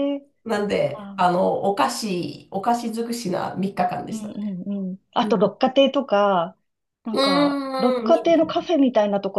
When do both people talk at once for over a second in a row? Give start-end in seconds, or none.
7.1-8.5